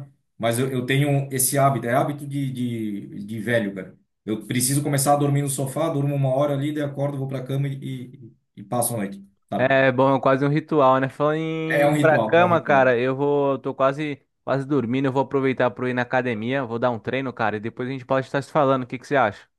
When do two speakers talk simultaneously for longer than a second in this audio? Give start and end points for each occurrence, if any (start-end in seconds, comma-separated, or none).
11.7-12.9